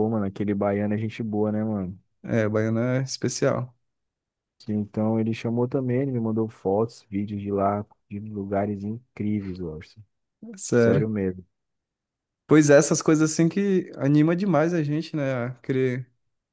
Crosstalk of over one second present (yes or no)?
no